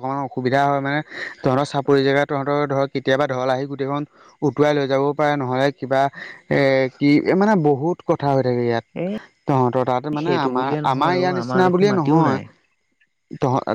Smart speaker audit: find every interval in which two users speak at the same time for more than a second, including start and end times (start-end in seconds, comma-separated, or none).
10.2-12.4